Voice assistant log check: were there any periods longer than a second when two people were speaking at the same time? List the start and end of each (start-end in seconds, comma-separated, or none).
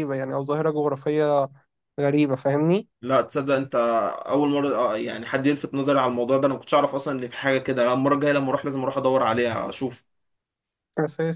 none